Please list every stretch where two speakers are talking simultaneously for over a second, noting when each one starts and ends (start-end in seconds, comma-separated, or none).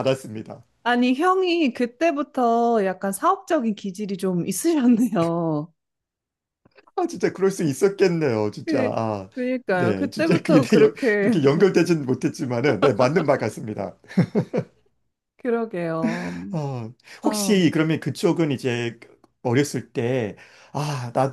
9.7-11.4